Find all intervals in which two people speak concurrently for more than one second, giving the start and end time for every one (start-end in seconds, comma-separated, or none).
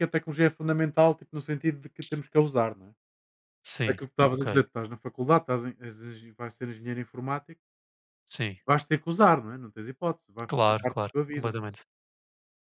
10.5-11.8